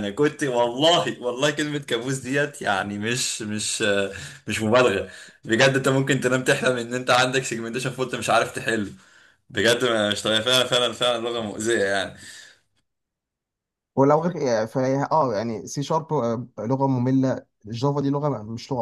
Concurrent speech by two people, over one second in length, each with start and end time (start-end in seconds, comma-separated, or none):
none